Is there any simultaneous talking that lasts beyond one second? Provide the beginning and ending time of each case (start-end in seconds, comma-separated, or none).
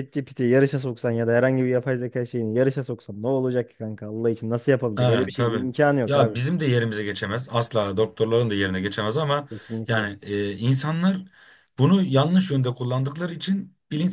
5.0-6.4